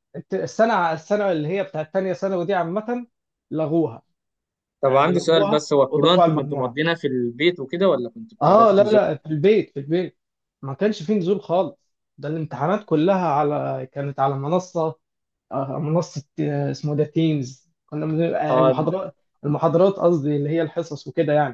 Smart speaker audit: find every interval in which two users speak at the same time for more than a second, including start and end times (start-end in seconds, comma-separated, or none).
4.8-6.8